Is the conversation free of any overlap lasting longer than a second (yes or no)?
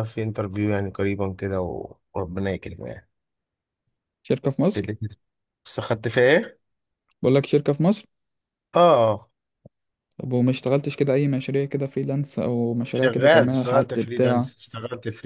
no